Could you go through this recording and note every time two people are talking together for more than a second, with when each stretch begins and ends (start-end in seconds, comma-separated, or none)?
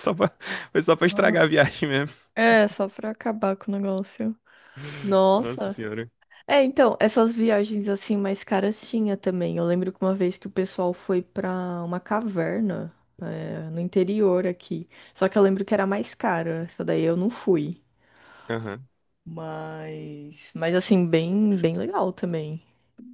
none